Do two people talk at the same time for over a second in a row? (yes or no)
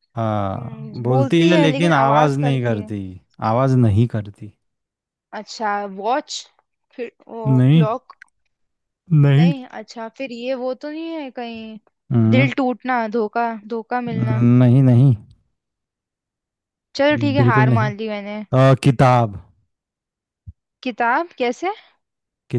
yes